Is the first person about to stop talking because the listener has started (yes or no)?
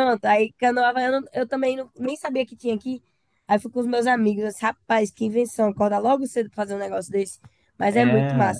yes